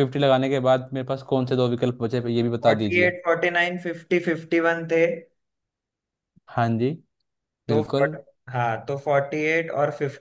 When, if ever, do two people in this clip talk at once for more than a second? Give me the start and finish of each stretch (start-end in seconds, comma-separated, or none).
none